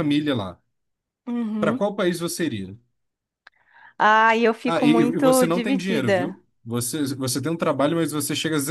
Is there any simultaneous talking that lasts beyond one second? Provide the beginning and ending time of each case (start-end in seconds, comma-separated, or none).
4.7-6.3